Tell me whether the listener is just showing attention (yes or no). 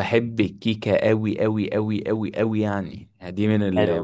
no